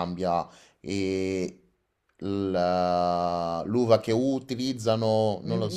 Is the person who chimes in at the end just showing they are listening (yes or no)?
no